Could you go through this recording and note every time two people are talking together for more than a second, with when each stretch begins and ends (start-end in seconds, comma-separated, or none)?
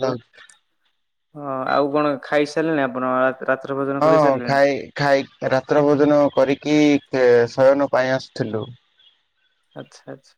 none